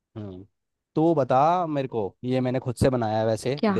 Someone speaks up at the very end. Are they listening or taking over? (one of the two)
listening